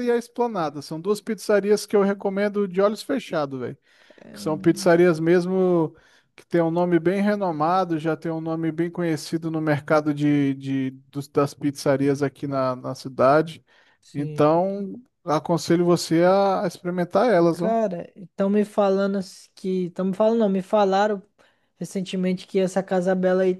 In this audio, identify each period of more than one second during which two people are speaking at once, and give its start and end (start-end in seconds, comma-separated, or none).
none